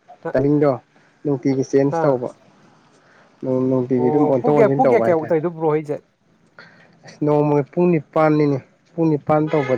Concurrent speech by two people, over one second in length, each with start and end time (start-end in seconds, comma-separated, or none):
4.0-5.4